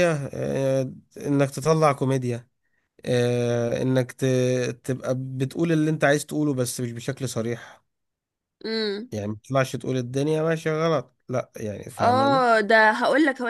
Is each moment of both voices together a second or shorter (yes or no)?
yes